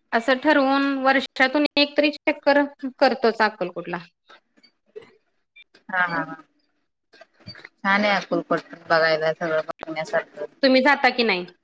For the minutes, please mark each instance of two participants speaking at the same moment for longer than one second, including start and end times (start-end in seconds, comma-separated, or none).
none